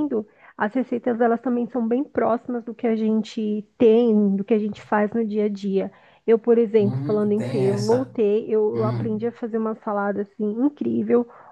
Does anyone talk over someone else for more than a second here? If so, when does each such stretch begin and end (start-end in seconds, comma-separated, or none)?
6.8-8.1